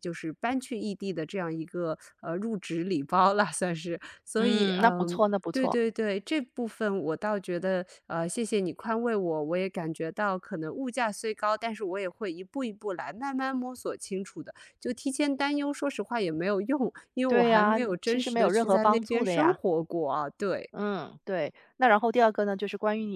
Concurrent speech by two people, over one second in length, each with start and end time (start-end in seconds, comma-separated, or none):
4.4-5.8, 17.3-19.6